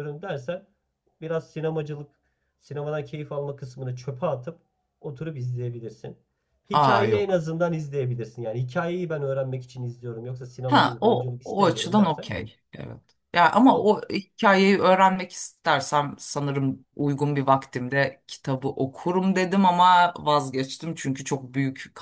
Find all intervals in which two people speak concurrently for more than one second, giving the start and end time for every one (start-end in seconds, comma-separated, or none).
10.7-12.3